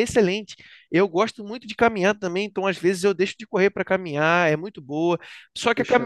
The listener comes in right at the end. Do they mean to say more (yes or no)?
no